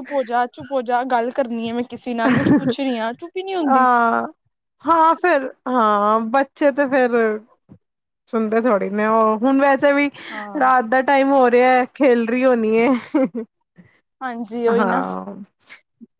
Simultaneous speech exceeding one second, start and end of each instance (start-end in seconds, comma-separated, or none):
none